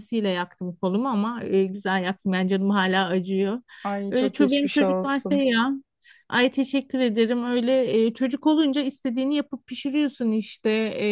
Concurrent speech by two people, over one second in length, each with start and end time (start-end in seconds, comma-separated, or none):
4.1-5.5